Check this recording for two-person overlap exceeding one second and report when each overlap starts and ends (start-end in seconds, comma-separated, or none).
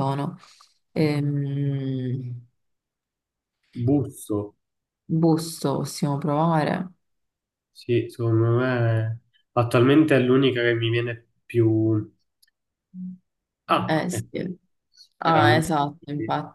none